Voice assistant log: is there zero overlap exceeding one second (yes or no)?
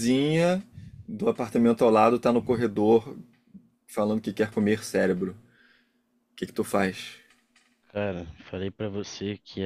yes